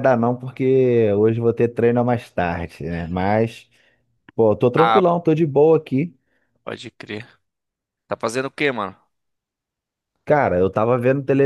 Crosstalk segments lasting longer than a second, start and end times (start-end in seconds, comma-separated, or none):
none